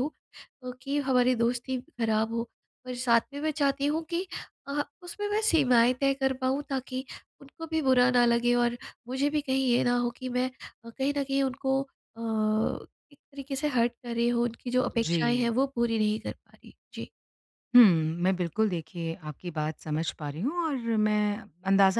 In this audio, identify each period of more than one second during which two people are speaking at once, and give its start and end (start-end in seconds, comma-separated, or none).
none